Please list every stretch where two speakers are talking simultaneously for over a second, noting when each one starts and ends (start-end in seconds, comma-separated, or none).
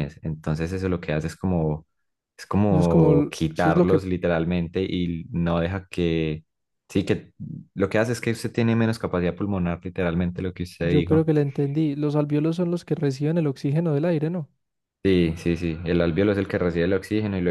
2.7-4.0